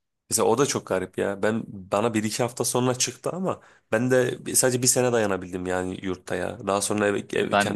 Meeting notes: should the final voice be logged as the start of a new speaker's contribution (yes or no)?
no